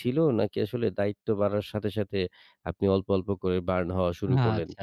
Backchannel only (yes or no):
no